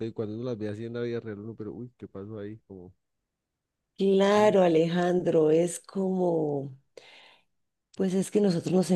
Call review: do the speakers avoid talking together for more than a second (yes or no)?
yes